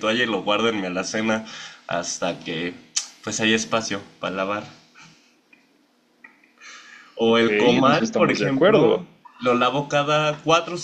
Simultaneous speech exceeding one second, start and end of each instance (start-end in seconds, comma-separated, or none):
7.3-9.0